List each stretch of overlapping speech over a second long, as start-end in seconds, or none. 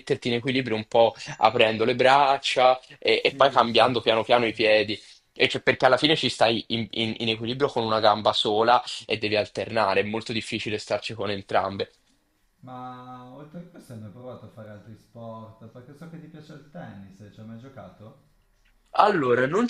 3.2-4.5